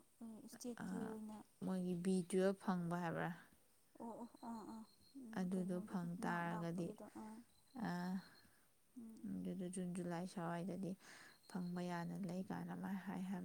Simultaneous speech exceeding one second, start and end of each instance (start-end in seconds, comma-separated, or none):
5.4-6.9